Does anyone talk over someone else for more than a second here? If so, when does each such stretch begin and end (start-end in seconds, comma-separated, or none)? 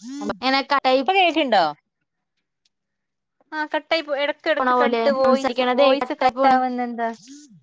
4.6-6.5